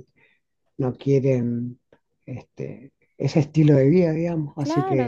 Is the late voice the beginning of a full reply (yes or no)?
yes